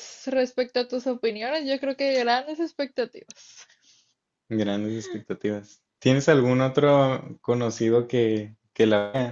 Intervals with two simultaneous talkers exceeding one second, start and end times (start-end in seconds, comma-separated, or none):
none